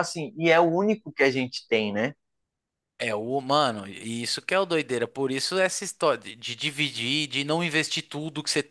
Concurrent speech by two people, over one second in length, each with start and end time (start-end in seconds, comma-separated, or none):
none